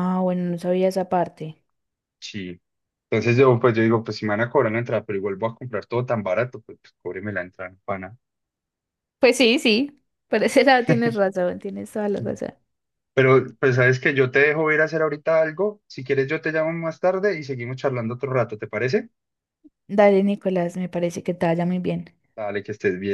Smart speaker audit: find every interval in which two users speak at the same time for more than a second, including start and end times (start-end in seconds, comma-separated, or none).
none